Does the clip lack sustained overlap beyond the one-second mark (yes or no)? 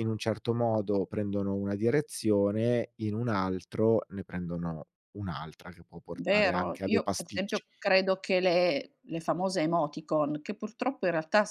no